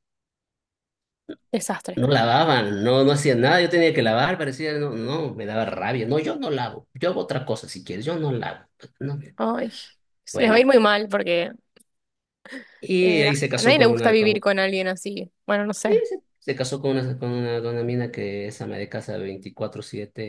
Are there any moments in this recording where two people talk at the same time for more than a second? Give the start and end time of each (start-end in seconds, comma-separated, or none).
13.0-14.5